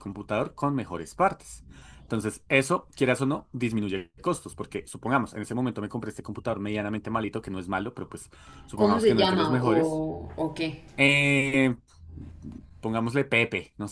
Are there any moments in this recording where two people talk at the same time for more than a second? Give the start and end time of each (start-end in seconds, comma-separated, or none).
8.8-10.0